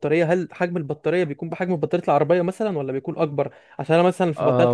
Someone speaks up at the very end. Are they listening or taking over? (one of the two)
listening